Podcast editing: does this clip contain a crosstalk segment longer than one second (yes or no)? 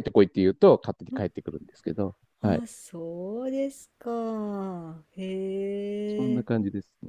no